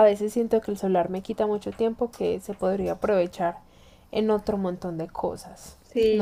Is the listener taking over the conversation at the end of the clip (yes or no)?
yes